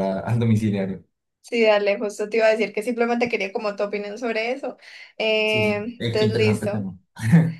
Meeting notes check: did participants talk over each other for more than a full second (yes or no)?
yes